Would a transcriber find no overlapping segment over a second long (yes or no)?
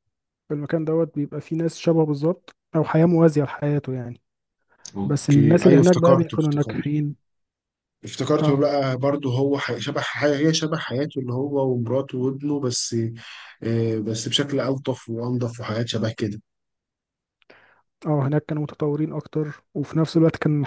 no